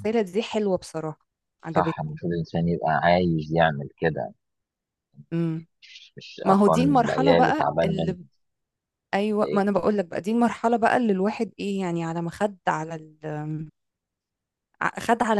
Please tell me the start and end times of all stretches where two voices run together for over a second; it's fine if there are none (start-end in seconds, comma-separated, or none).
6.5-8.2